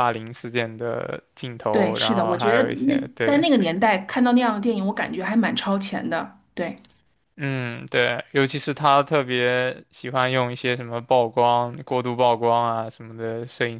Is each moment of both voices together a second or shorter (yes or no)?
no